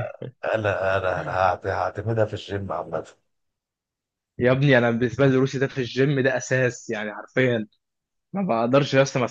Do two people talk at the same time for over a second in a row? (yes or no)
no